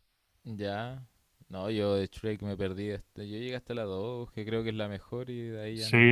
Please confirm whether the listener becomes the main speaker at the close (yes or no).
yes